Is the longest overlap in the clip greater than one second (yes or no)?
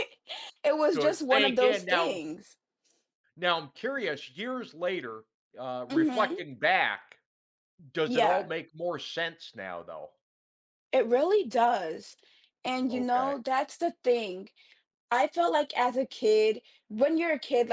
yes